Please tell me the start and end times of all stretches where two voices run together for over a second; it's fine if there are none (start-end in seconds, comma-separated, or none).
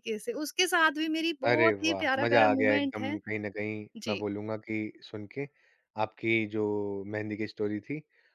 1.5-3.2